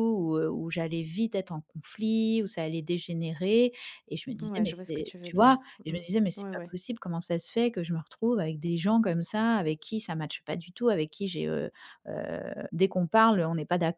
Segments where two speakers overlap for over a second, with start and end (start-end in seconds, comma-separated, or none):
4.4-6.8